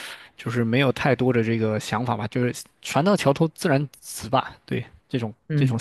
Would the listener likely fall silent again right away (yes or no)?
no